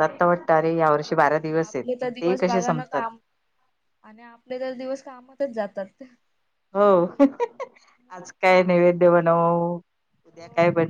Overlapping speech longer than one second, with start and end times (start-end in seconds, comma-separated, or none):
0.7-3.0